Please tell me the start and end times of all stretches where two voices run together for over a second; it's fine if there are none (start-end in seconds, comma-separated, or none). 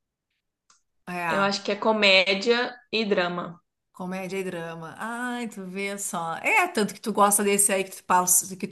none